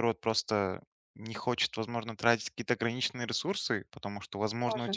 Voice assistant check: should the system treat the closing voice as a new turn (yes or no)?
no